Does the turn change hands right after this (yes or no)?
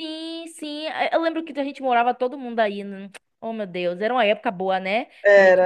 yes